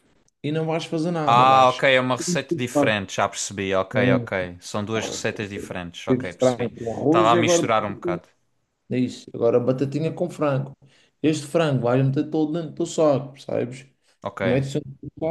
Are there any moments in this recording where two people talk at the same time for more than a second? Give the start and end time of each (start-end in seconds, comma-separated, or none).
6.1-7.6